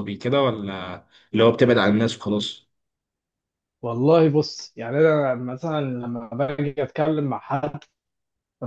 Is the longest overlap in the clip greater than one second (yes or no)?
no